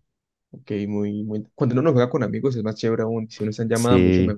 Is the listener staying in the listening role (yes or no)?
no